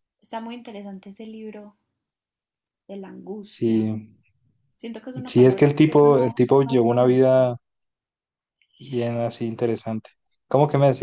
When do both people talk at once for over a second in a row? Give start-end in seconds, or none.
5.3-7.3